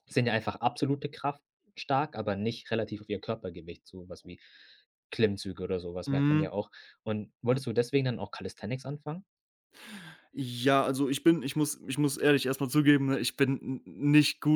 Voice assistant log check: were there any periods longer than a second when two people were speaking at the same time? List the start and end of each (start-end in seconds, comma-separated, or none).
none